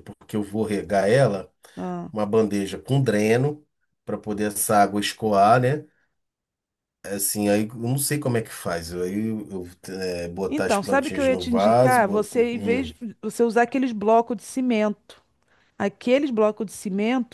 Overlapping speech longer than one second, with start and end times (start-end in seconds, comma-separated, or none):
10.5-12.3